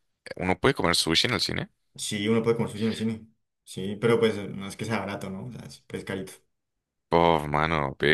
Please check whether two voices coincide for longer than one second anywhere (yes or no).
no